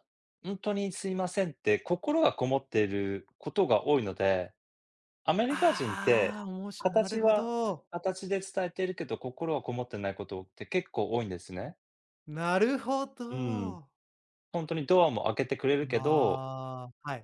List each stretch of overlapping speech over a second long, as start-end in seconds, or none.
5.5-7.5